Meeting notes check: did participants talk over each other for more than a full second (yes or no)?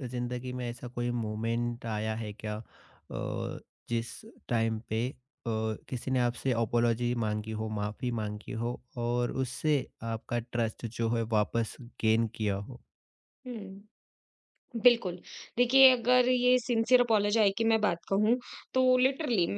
no